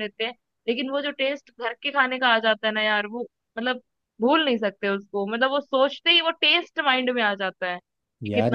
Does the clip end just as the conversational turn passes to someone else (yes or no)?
yes